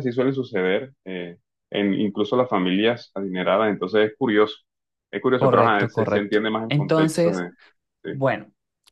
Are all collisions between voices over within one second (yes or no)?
no